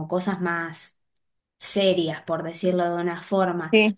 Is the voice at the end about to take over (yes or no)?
no